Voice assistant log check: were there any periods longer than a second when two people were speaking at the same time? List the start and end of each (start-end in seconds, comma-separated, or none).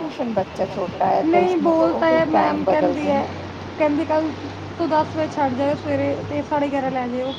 1.2-3.2